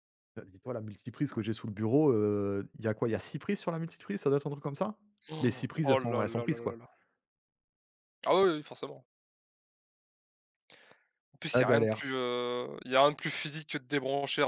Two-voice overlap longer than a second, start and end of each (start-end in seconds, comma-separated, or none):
5.4-6.8